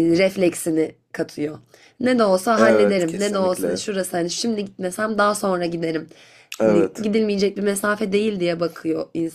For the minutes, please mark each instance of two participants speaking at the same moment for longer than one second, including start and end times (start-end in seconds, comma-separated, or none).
2.6-3.8